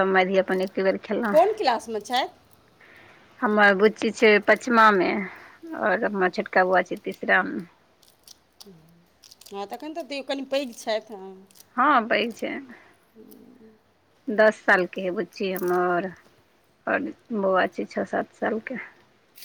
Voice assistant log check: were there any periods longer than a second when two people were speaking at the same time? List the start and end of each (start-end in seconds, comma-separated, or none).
none